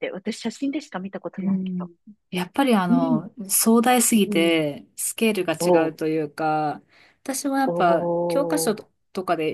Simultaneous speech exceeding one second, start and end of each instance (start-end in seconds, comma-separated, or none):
none